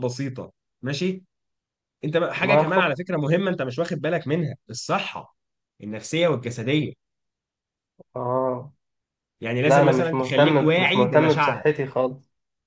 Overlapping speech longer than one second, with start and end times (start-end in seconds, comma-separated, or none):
9.6-11.6